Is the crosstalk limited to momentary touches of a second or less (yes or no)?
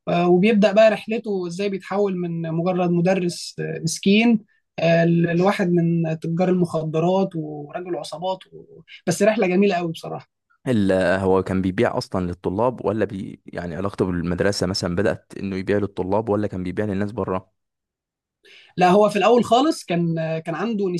yes